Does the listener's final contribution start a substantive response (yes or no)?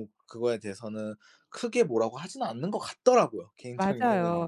yes